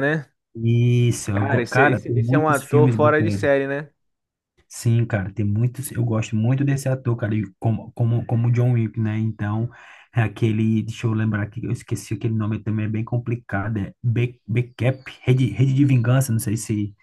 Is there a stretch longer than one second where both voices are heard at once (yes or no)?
yes